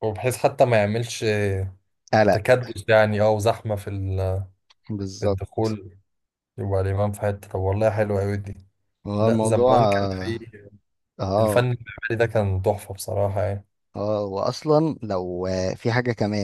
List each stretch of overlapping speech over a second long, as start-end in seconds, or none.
9.2-10.4